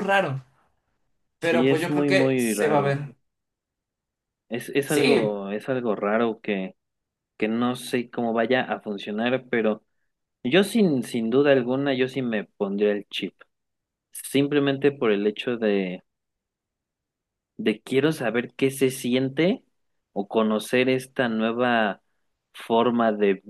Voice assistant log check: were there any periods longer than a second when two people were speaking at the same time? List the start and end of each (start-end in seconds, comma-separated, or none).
1.4-3.0